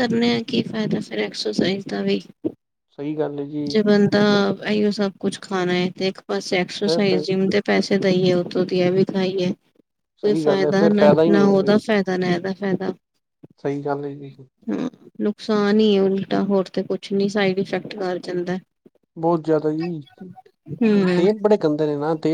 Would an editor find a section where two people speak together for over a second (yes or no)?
yes